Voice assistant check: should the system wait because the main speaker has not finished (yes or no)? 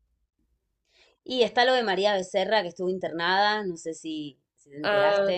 no